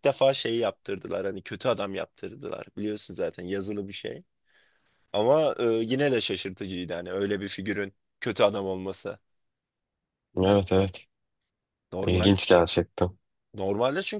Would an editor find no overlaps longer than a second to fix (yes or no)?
yes